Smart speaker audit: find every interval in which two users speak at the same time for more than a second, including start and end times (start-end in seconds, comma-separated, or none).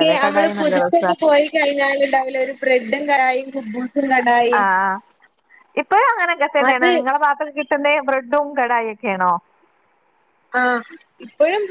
none